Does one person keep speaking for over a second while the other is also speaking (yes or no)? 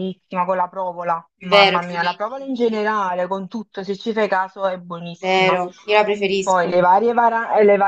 yes